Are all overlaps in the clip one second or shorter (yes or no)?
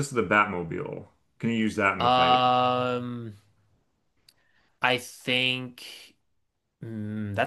yes